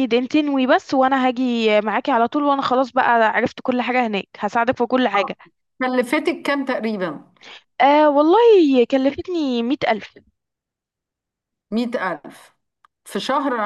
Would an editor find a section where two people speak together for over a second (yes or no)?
no